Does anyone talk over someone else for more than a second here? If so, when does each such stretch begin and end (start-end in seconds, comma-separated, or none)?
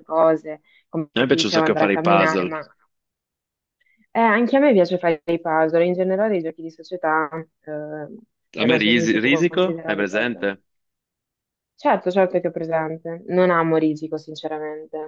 1.1-2.5, 8.6-10.5